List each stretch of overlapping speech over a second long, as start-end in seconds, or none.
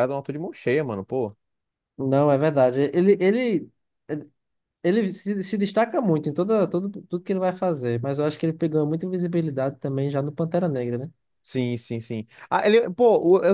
none